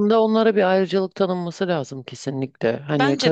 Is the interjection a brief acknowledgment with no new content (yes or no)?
yes